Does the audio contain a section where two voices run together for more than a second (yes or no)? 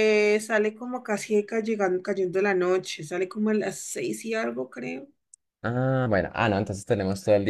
no